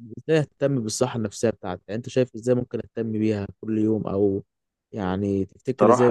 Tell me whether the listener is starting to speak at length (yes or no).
yes